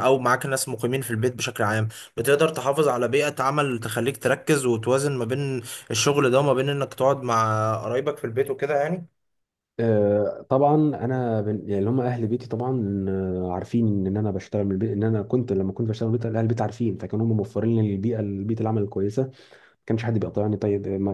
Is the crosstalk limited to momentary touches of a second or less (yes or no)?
yes